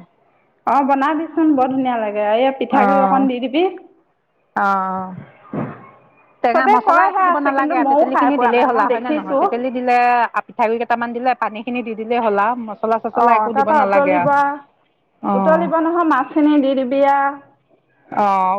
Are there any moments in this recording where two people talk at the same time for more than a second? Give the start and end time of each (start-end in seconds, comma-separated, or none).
6.5-9.4